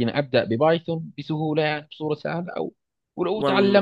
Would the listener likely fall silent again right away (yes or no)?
yes